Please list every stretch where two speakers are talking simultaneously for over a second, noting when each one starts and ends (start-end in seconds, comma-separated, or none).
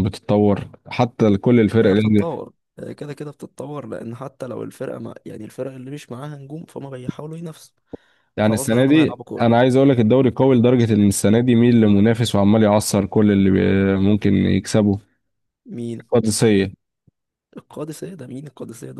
8.4-9.6